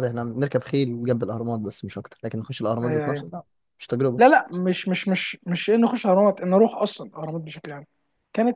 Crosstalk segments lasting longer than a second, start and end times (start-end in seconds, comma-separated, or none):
none